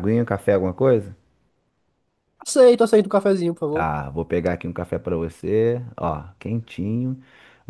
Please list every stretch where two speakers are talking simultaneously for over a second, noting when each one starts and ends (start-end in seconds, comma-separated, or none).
none